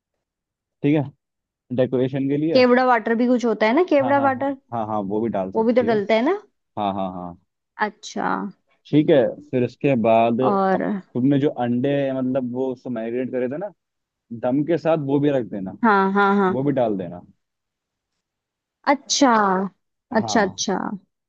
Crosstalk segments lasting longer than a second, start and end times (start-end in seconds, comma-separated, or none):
none